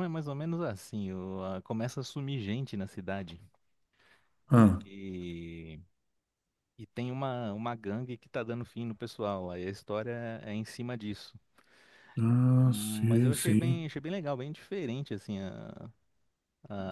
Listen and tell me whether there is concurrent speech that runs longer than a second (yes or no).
yes